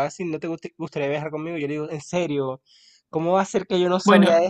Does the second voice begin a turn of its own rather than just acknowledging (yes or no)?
yes